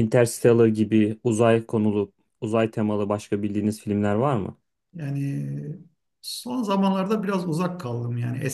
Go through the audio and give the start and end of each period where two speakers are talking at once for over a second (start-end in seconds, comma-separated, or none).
none